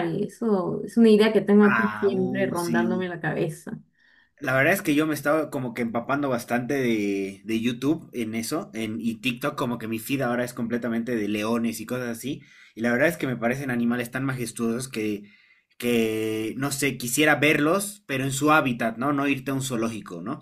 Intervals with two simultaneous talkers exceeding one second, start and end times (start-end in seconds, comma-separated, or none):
1.7-3.0